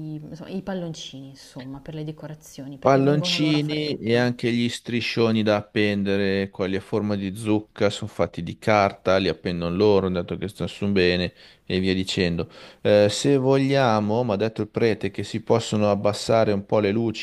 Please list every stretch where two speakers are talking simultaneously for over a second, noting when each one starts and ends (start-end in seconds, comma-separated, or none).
2.8-4.4